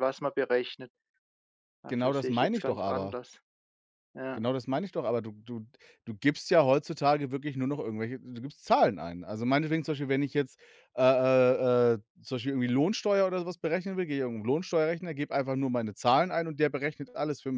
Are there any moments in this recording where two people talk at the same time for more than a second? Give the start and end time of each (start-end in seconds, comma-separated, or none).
1.9-3.2